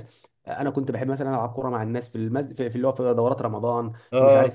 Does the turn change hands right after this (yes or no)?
no